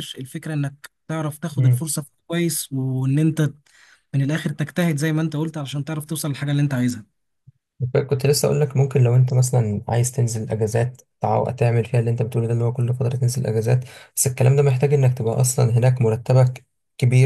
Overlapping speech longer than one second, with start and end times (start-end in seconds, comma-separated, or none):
none